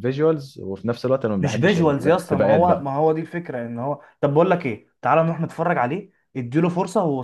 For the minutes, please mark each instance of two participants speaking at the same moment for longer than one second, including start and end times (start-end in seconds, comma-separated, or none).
1.4-2.9